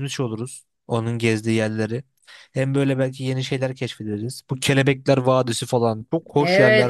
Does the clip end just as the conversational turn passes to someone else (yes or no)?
yes